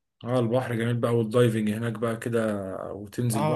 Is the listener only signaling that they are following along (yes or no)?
no